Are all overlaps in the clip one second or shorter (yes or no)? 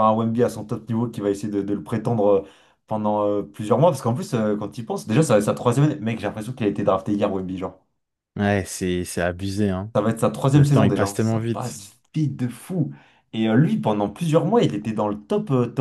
no